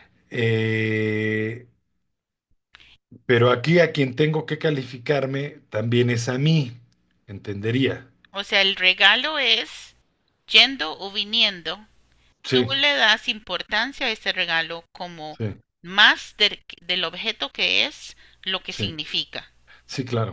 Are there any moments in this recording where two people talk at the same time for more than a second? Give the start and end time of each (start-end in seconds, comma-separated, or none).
none